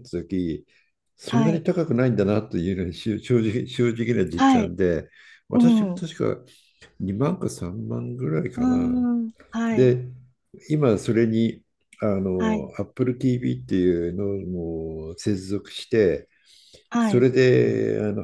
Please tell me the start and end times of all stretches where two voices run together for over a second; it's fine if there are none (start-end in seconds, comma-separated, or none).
none